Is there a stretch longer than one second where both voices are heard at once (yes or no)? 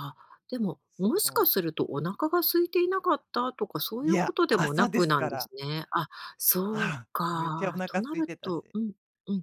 yes